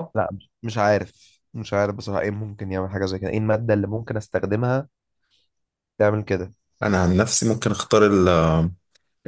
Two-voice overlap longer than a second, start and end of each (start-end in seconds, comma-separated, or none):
none